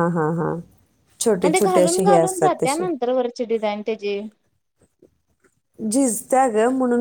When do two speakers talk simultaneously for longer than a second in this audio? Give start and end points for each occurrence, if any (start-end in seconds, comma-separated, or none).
1.4-2.9